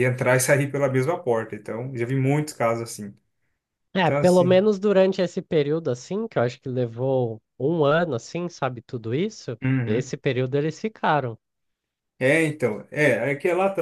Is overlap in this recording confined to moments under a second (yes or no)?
yes